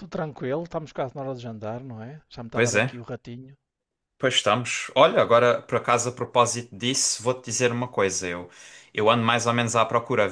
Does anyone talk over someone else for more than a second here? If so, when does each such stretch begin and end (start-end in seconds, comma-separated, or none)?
none